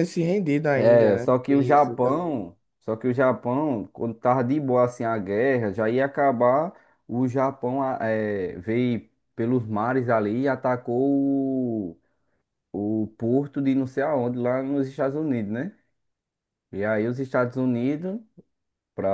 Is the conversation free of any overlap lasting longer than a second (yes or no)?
no